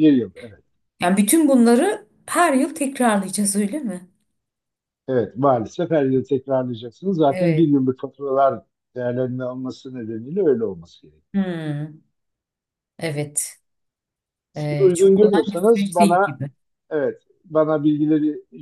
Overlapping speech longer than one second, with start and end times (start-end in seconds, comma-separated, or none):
14.6-16.4